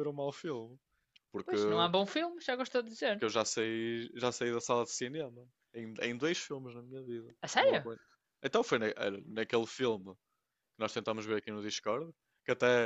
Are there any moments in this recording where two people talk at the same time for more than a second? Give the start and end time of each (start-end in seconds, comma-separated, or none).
none